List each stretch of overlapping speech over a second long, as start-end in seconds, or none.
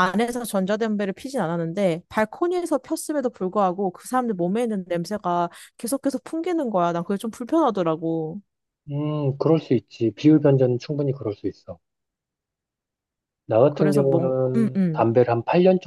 13.7-15.1